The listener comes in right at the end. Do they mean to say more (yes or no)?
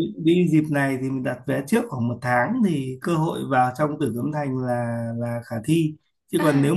no